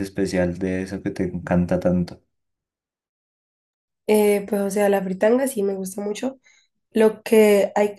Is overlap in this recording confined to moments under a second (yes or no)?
yes